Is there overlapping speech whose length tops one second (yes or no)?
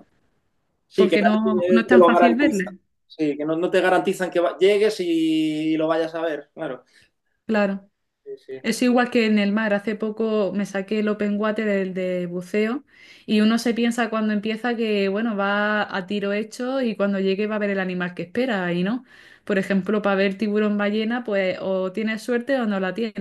yes